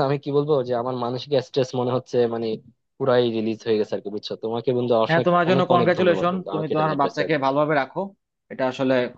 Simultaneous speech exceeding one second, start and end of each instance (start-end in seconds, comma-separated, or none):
5.1-7.5